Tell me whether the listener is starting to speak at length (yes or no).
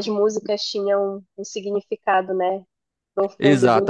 yes